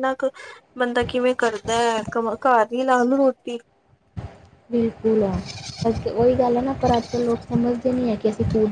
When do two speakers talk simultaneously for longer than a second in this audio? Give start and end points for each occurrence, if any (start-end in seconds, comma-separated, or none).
none